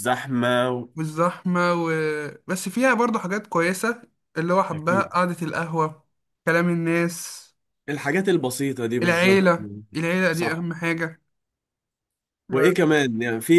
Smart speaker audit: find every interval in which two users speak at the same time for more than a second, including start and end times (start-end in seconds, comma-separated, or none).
none